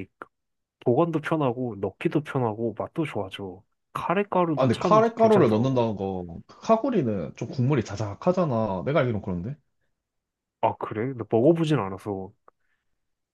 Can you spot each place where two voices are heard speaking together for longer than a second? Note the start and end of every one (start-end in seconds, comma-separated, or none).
4.5-5.8